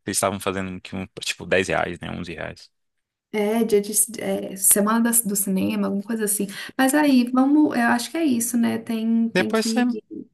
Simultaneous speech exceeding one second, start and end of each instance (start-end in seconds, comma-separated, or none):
none